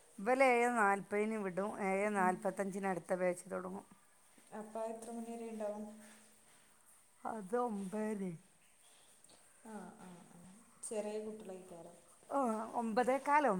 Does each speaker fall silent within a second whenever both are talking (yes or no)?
yes